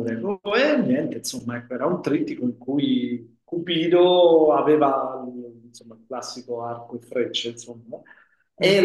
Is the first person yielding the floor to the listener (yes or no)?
no